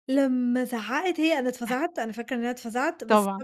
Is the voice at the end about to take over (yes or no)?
no